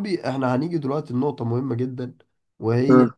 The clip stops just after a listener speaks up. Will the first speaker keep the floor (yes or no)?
yes